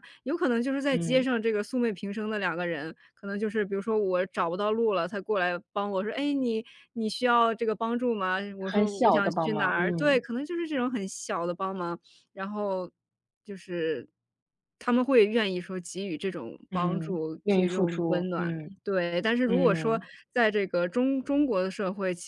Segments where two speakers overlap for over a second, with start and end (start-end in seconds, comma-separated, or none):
8.6-10.2, 16.7-18.8